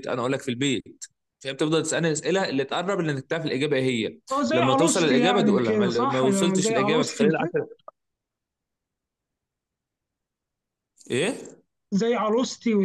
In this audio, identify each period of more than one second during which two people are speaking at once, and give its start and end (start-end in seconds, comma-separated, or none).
4.3-7.5